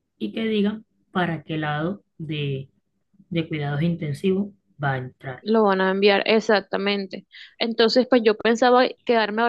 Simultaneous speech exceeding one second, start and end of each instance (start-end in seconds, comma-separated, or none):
none